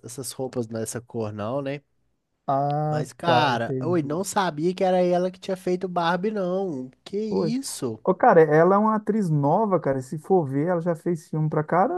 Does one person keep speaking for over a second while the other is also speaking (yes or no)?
yes